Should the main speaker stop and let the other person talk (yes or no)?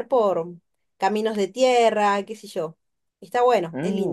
yes